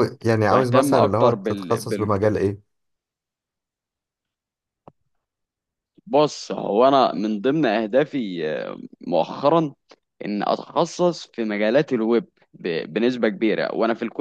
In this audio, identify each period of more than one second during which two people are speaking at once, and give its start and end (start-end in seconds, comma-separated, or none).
0.5-2.1